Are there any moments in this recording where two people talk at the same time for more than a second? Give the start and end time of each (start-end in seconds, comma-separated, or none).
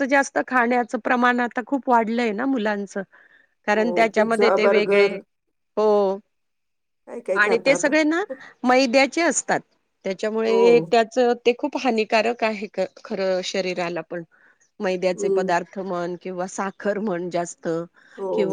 3.7-5.2